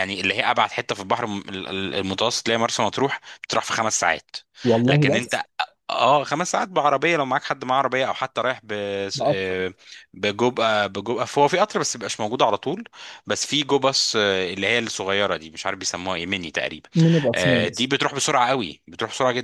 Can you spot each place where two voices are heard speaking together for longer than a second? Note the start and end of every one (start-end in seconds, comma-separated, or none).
none